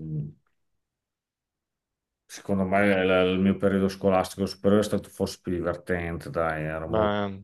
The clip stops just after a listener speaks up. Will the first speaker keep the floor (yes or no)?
yes